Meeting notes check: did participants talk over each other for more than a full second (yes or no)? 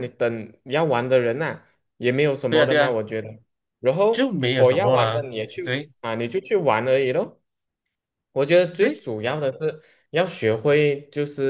yes